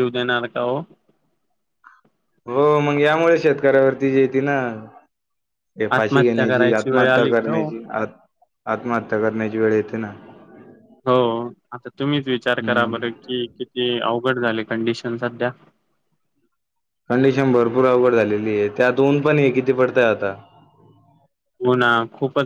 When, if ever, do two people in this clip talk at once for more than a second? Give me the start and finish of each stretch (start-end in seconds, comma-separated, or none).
6.0-7.7